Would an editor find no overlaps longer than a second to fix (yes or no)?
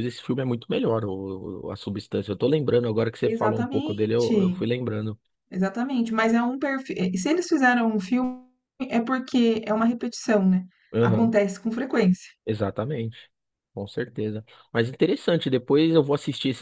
no